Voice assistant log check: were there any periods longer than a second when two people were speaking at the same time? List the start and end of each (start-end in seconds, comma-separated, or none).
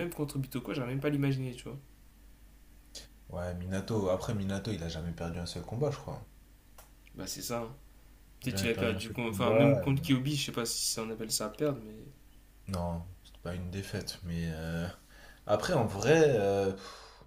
8.4-9.9